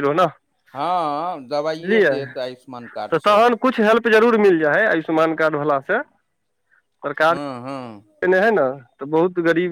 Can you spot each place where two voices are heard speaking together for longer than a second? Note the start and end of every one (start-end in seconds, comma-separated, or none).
none